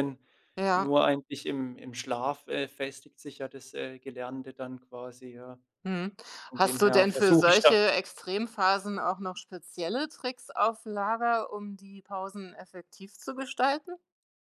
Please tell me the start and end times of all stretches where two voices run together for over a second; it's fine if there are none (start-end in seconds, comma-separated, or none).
6.5-7.8